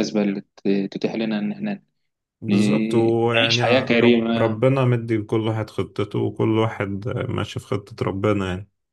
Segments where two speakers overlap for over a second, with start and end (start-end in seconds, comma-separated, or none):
2.5-4.6